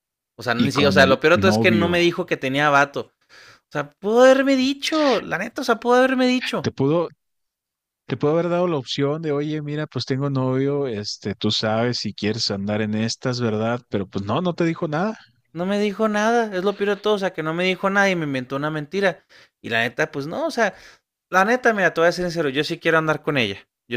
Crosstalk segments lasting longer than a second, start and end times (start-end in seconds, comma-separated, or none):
0.6-2.0